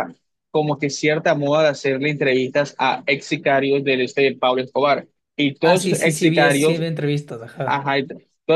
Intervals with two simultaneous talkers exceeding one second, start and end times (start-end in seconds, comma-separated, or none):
5.6-6.8